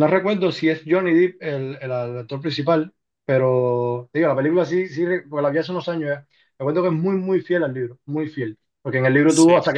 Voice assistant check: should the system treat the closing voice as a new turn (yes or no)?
no